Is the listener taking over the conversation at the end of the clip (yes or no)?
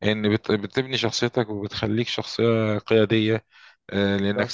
no